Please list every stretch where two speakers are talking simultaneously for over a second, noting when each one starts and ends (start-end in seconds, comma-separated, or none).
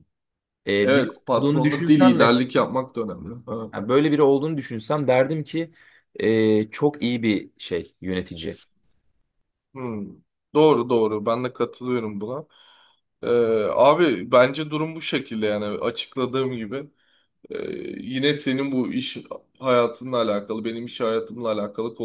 0.8-2.7